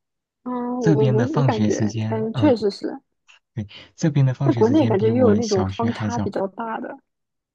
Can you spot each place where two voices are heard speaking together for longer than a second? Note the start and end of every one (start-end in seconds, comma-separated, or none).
0.8-2.5, 4.4-6.3